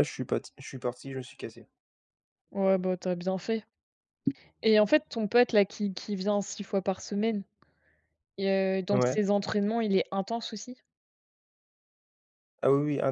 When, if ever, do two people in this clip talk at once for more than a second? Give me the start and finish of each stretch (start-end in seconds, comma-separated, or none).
none